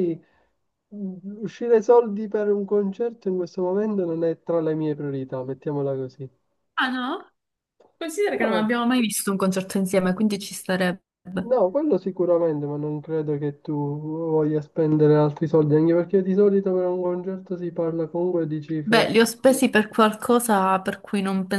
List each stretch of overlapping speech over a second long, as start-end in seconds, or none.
none